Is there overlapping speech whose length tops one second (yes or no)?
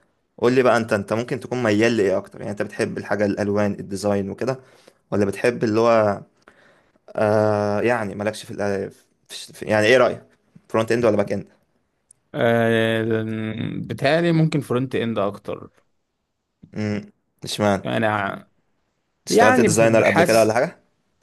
yes